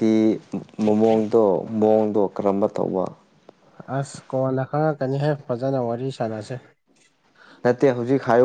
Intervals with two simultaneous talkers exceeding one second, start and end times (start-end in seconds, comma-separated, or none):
none